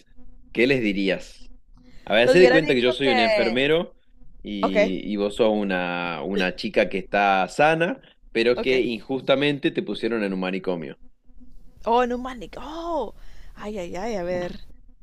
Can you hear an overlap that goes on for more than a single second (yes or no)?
yes